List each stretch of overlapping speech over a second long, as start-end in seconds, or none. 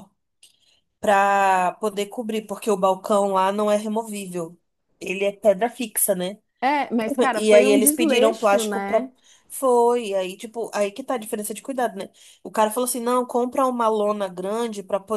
7.3-9.1